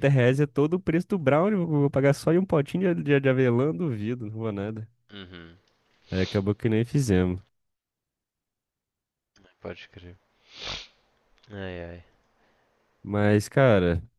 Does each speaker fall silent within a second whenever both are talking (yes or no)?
yes